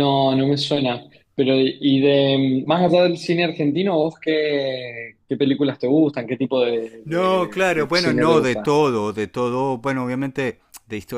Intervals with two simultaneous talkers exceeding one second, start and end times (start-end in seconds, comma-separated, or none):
7.0-8.8